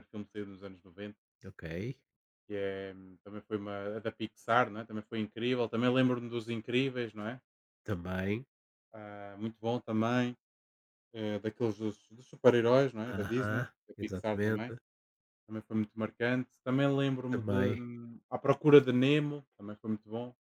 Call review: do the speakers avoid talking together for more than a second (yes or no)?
no